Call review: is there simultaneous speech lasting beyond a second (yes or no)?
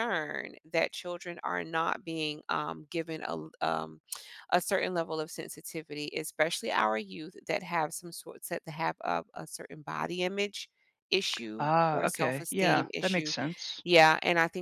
yes